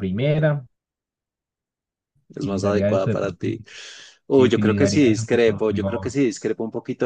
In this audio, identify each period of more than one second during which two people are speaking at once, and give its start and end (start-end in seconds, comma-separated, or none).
2.4-3.6, 4.3-6.2